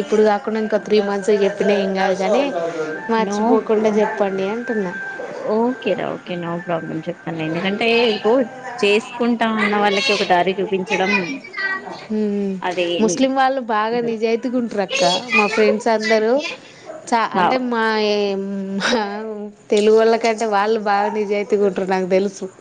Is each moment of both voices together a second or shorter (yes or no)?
yes